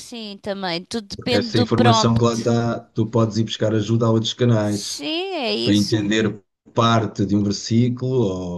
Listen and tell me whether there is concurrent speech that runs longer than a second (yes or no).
yes